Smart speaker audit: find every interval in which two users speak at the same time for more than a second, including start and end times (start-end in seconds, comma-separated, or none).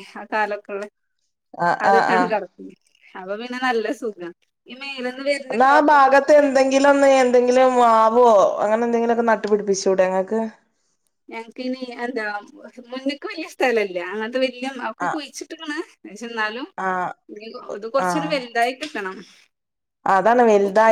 none